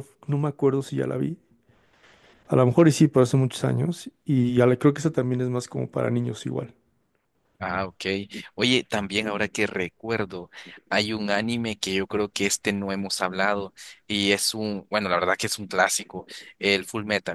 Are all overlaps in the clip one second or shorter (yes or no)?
yes